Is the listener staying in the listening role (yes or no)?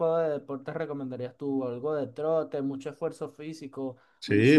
no